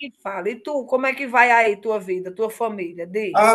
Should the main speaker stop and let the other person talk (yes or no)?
yes